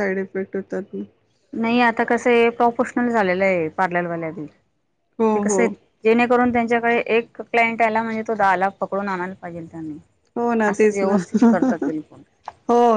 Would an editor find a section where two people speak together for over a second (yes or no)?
no